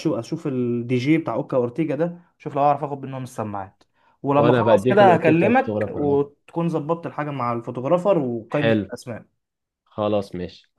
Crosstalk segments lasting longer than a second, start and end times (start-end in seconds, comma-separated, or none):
4.4-6.2